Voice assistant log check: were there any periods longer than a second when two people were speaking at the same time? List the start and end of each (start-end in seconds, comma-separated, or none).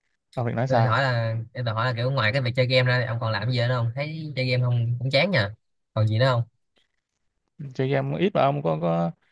none